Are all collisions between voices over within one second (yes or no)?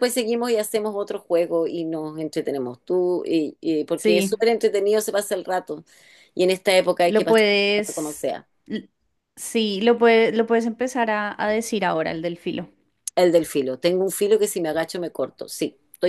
no